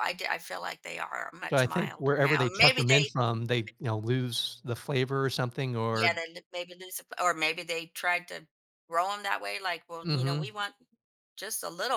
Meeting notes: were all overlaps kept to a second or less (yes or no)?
no